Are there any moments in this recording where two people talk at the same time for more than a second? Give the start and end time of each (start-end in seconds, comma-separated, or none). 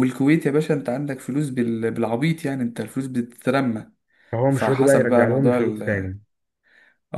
4.5-6.1